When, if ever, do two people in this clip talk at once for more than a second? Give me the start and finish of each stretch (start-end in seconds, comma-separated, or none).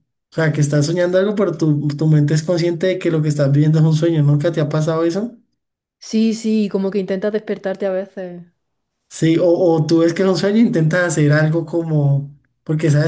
none